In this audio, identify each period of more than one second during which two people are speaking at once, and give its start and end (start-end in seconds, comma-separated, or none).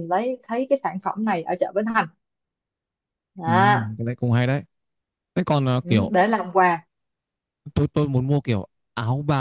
none